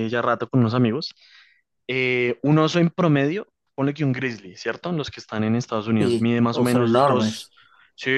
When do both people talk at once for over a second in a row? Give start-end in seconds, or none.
6.0-7.5